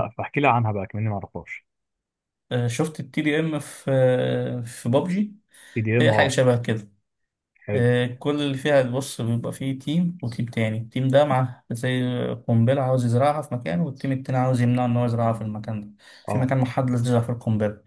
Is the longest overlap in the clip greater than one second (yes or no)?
no